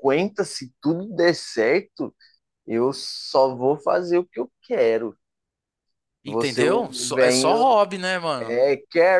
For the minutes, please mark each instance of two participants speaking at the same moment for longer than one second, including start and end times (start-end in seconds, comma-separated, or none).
6.2-7.6